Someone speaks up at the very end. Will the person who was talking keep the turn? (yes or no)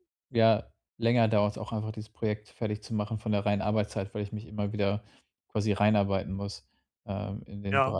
no